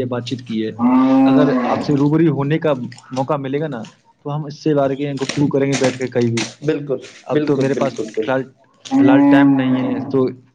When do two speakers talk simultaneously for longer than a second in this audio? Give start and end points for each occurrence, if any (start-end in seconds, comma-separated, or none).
7.3-9.0